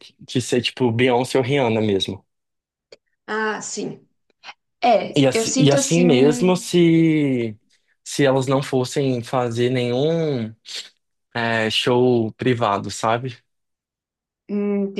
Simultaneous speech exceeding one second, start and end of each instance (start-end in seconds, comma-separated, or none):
5.2-6.7